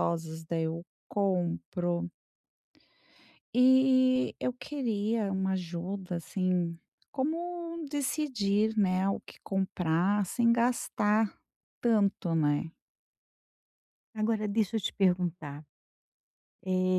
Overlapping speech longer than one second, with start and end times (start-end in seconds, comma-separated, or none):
none